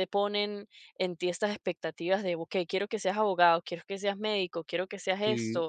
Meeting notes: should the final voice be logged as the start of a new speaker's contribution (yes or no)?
no